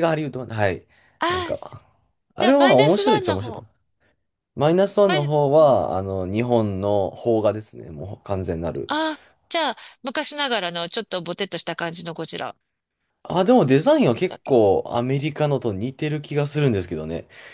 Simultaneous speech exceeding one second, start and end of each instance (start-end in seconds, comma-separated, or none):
2.4-3.6